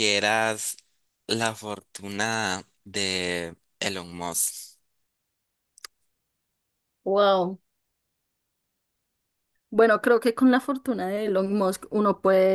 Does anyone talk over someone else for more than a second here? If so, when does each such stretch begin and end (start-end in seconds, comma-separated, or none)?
none